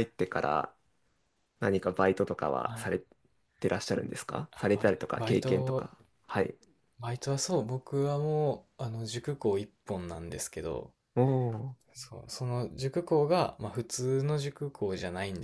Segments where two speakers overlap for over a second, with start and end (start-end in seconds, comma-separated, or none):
4.5-5.9